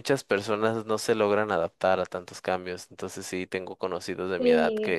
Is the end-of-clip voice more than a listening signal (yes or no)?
no